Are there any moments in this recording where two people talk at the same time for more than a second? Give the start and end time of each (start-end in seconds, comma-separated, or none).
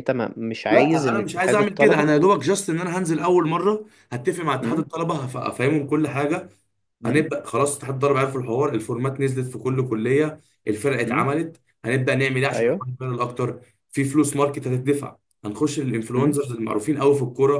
0.7-2.1